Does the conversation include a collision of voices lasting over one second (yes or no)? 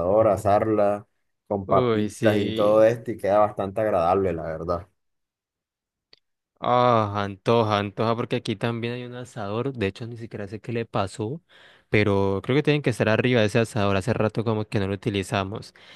yes